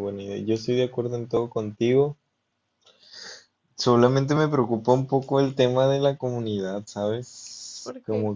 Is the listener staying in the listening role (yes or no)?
yes